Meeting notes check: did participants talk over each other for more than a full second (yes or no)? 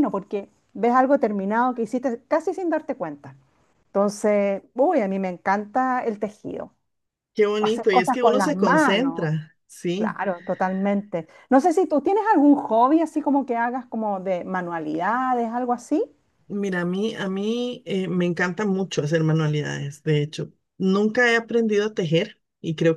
yes